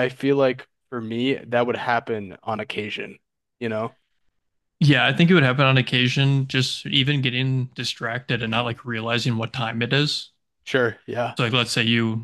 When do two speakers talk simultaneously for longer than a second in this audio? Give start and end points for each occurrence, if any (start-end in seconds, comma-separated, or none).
none